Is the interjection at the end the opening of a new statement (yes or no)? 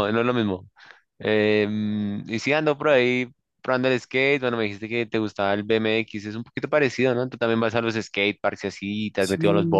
yes